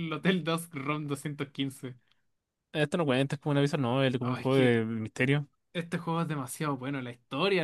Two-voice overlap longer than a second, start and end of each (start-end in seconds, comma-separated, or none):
none